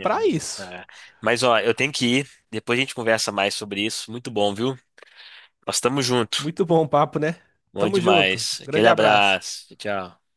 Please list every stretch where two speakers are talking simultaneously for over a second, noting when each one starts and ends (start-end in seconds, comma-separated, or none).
7.8-9.4